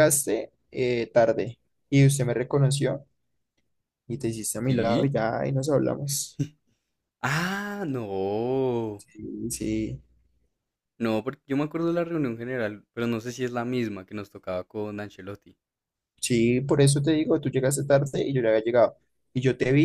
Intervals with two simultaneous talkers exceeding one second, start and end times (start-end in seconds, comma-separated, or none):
none